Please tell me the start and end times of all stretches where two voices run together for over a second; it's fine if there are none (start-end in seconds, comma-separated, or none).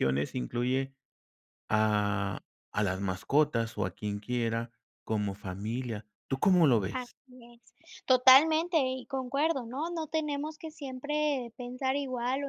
none